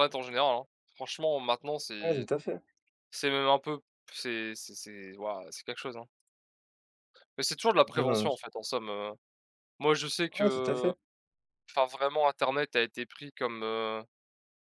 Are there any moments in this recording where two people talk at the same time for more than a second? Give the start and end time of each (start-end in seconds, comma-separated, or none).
none